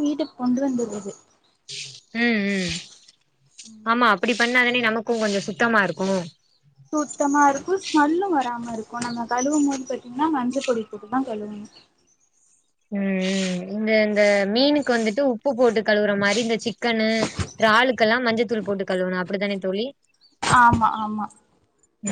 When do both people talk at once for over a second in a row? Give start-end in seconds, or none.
none